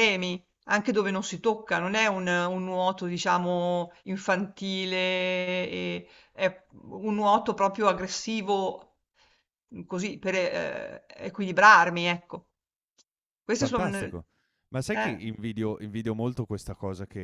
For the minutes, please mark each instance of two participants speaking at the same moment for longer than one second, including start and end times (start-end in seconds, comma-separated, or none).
none